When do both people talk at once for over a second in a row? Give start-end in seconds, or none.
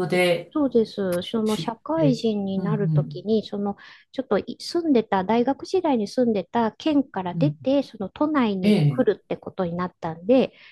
1.4-3.3